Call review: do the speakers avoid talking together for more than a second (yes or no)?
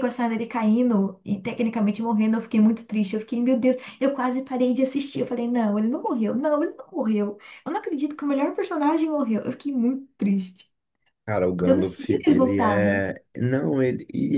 no